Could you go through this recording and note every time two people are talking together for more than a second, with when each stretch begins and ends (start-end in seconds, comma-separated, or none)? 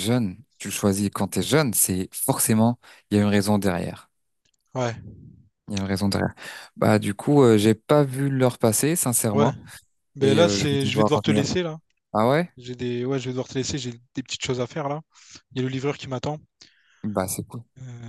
10.2-11.4